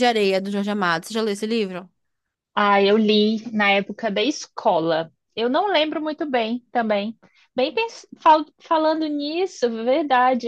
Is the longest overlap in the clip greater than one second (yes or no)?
no